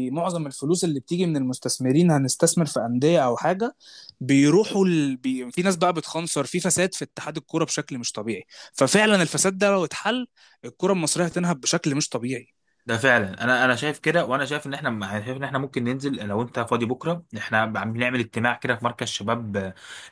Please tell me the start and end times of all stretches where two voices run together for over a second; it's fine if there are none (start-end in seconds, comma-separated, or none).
none